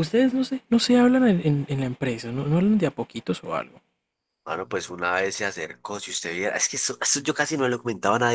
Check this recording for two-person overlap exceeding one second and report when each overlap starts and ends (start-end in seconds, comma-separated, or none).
none